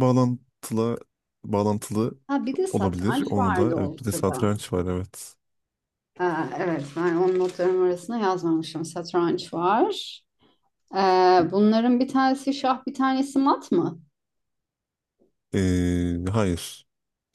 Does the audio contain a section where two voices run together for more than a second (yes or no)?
yes